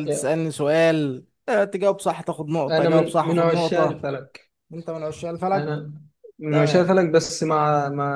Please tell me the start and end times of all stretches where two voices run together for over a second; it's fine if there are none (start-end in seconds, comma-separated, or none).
2.7-4.1